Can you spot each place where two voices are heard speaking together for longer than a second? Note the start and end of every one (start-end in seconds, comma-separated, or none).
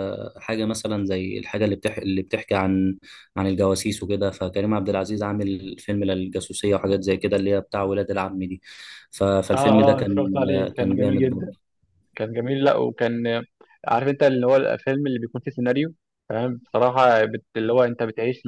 9.5-11.6